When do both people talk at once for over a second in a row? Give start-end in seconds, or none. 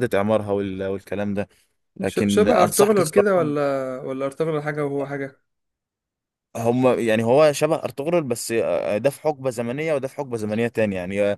2.0-3.5